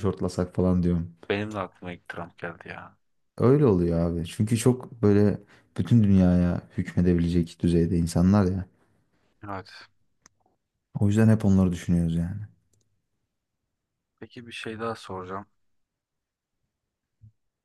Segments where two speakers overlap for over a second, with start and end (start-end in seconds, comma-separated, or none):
none